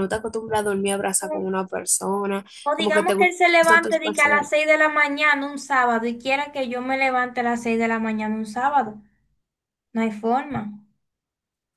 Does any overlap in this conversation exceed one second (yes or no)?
yes